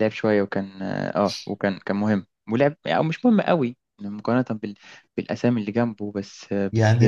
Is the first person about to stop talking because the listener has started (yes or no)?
yes